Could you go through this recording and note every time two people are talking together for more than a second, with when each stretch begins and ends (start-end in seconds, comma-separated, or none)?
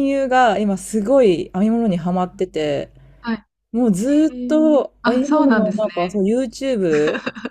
4.3-6.2